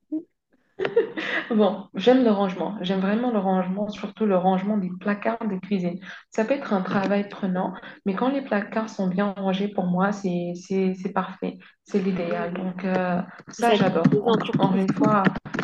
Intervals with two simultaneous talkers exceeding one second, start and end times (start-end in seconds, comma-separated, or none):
13.6-15.1